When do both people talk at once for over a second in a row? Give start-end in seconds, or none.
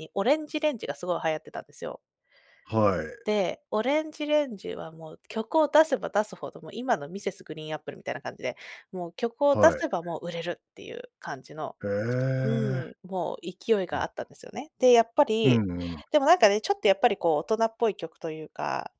none